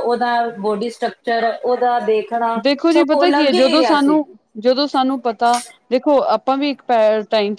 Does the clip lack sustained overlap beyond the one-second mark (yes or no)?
yes